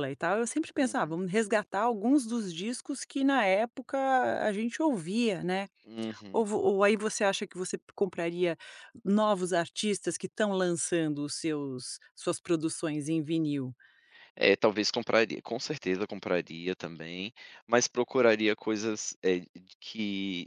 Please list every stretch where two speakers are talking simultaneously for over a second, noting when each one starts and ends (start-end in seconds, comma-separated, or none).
none